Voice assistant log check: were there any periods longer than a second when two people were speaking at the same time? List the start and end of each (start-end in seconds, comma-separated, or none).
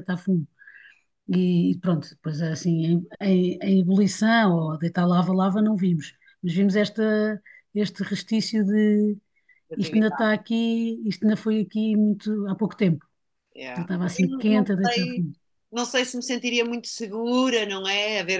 13.8-15.2